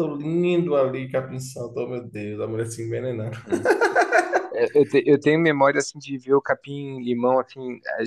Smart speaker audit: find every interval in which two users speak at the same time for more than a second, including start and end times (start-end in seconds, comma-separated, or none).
none